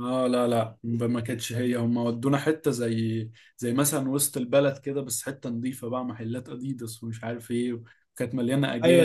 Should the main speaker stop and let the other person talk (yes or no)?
yes